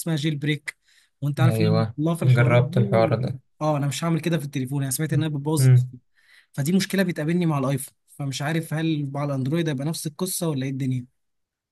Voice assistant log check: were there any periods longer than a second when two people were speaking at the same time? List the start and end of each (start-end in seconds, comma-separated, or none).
1.4-3.2